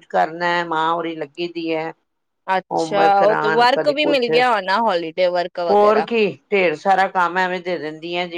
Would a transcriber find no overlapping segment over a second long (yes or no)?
yes